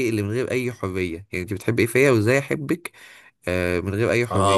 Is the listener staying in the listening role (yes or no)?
no